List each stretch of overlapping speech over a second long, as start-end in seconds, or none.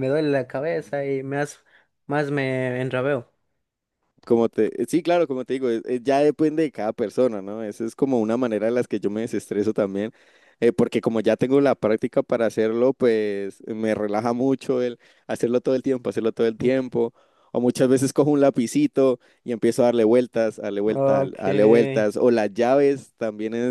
20.9-22.1